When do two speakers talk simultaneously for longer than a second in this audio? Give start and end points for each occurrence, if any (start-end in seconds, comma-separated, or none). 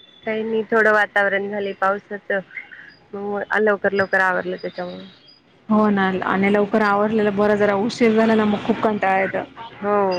none